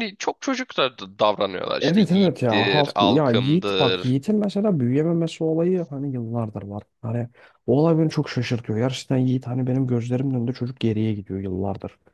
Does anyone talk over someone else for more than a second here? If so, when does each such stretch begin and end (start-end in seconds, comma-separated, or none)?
1.8-4.2